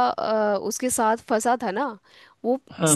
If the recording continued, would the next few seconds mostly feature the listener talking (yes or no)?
no